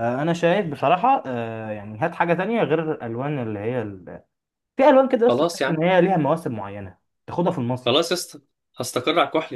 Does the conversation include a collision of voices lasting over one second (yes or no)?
no